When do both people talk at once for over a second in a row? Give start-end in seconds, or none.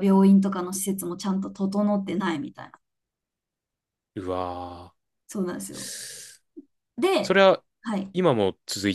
none